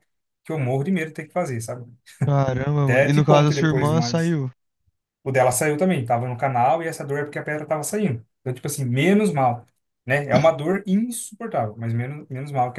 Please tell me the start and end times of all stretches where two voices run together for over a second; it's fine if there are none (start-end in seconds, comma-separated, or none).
2.8-4.4